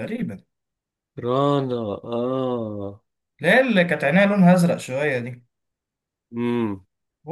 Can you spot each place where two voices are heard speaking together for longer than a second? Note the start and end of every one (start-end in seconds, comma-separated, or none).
none